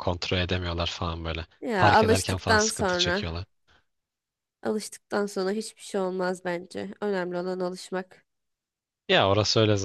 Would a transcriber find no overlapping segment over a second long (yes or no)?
no